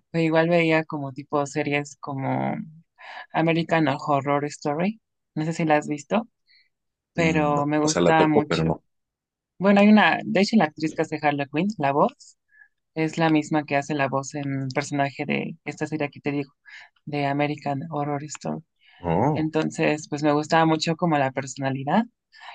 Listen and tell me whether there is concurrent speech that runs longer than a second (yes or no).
yes